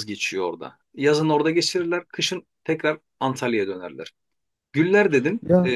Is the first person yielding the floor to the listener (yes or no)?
no